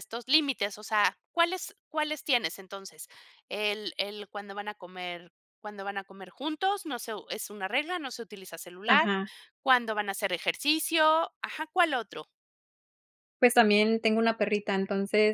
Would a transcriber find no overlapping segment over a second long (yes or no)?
yes